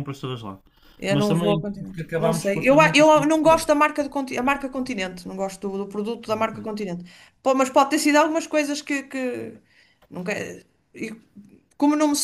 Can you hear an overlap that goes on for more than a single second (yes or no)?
yes